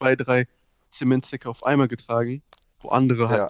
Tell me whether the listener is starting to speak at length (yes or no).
no